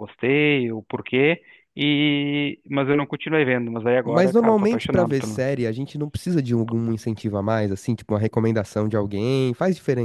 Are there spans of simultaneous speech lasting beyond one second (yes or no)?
yes